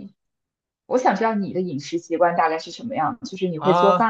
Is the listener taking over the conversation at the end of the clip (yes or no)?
yes